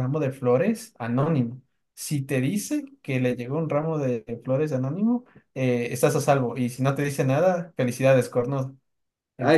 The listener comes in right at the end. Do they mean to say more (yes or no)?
yes